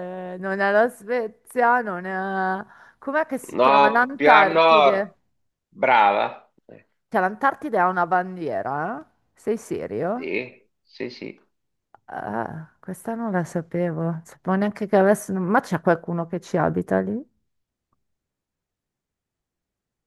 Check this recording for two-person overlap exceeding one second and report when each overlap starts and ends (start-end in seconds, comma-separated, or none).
3.5-5.1